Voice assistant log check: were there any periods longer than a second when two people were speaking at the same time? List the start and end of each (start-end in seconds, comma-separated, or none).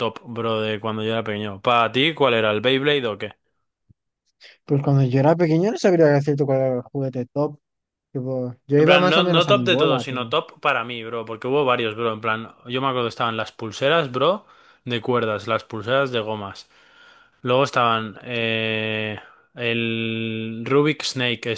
8.8-10.3